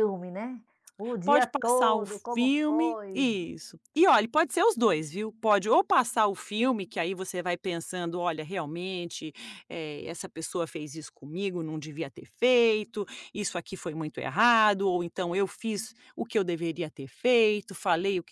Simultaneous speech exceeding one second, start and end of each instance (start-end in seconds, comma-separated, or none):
1.2-3.3